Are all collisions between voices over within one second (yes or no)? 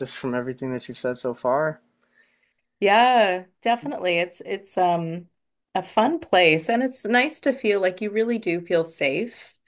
yes